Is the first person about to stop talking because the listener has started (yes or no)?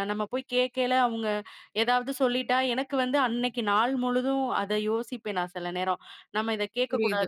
no